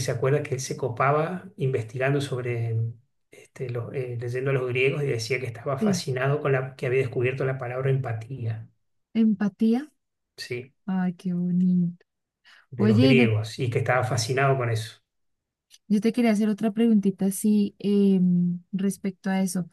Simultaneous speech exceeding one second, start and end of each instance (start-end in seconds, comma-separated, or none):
none